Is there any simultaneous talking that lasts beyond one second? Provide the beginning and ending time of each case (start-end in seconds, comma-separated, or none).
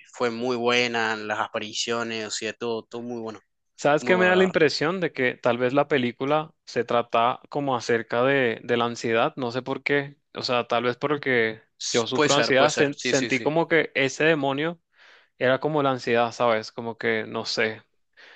11.8-13.5